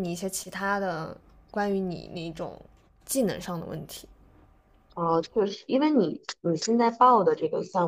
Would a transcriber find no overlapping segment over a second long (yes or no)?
yes